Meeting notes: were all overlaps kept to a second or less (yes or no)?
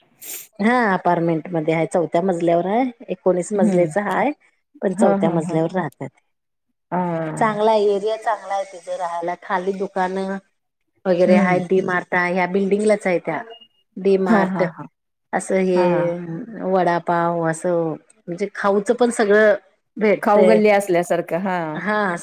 yes